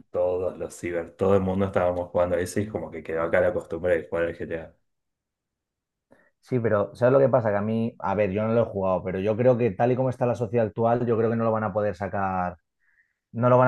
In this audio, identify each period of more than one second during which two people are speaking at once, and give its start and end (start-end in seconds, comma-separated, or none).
none